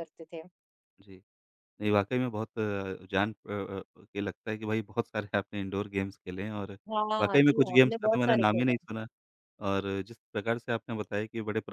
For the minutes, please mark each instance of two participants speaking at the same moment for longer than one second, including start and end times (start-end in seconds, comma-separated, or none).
7.2-8.8